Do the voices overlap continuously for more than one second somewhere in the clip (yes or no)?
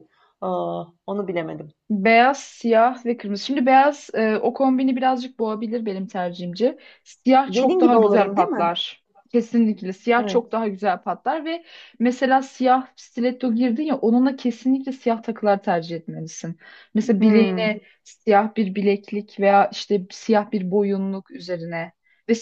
yes